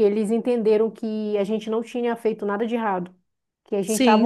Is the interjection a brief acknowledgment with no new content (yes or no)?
yes